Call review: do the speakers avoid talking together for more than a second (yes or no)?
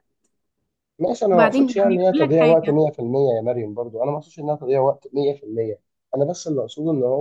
no